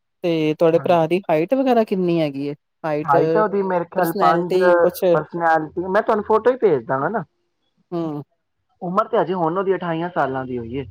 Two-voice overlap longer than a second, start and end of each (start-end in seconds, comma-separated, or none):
none